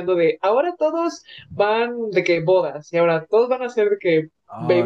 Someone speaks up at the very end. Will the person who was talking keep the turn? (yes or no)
no